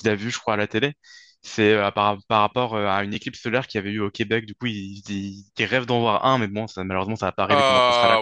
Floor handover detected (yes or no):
yes